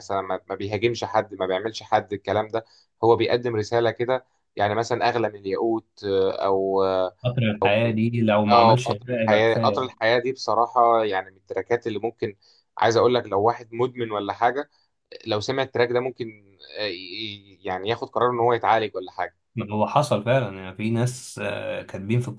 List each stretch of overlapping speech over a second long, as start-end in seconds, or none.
8.5-9.9